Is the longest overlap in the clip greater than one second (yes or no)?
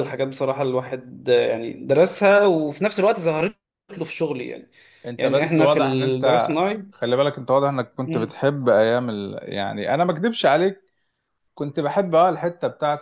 yes